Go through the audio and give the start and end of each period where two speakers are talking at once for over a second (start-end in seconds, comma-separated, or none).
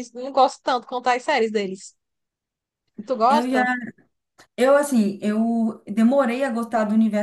none